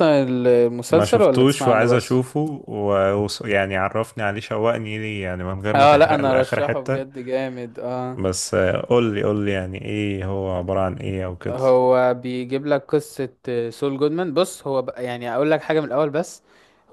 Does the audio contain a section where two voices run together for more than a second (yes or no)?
yes